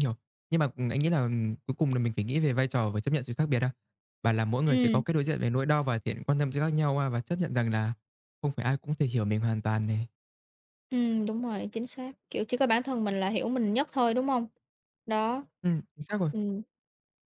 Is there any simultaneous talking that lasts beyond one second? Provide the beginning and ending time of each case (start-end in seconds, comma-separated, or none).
none